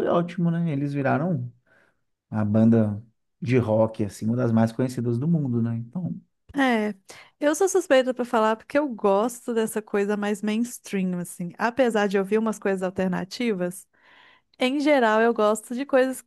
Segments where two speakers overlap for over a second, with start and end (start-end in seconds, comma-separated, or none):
none